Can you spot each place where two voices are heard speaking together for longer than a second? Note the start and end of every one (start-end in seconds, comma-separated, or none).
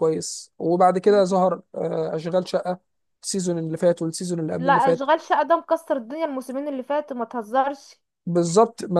none